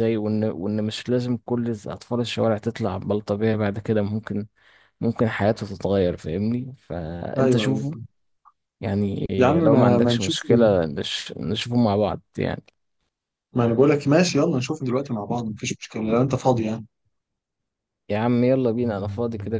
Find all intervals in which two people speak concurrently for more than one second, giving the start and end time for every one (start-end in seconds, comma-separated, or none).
9.4-10.7